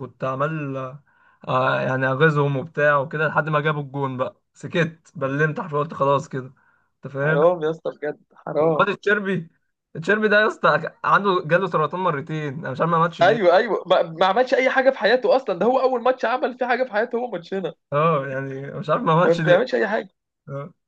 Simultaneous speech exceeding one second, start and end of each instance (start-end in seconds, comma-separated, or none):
none